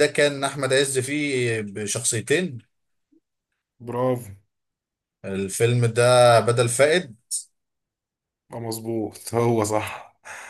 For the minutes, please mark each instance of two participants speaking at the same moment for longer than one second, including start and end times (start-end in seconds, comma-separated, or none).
none